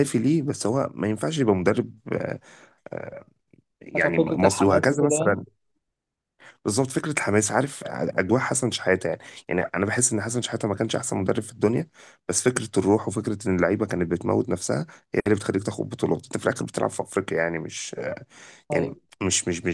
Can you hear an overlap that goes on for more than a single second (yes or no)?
yes